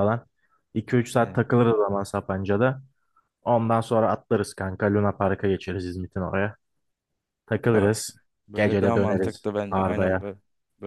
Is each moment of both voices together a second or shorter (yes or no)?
no